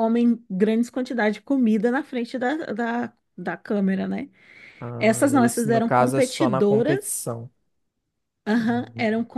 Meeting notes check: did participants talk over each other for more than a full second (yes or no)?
yes